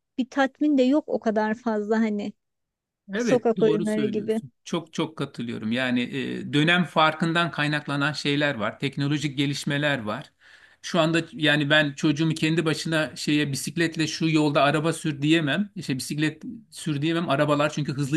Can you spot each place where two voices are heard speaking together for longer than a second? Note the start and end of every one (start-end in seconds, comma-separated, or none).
3.2-4.4